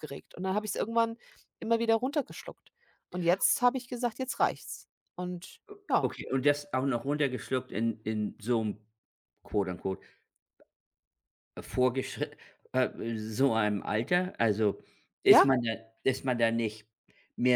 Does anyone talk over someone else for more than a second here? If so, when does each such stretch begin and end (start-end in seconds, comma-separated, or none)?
none